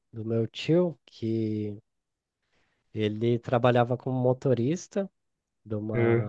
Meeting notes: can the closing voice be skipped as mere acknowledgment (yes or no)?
yes